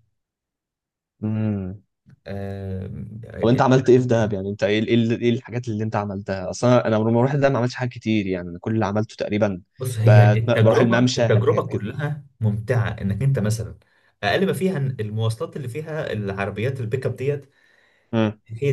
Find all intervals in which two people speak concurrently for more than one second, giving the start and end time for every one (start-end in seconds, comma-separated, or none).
10.1-11.8